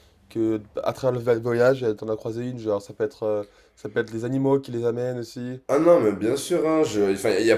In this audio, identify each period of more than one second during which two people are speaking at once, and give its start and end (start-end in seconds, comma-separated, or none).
none